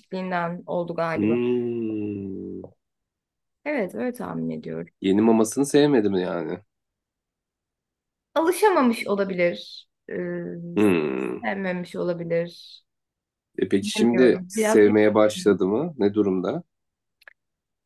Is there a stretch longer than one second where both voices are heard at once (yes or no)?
yes